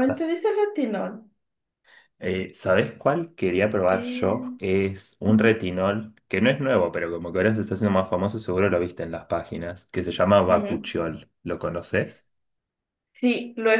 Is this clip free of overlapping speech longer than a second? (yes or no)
yes